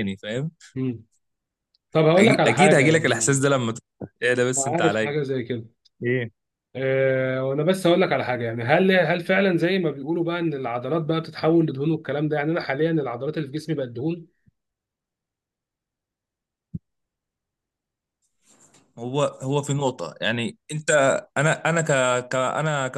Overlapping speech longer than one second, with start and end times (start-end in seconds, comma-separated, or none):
2.2-3.4